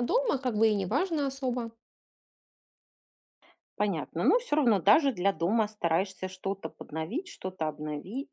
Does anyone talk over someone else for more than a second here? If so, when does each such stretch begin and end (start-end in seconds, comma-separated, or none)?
none